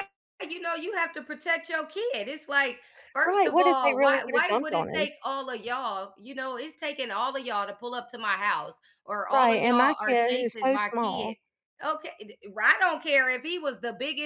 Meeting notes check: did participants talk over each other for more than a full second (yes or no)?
yes